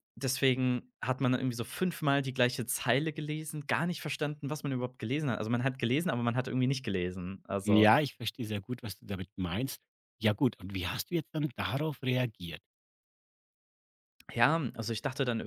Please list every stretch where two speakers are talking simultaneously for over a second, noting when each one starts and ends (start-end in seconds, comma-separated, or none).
none